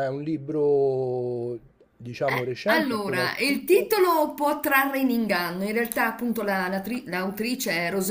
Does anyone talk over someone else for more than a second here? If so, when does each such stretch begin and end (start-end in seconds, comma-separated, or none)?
2.2-3.9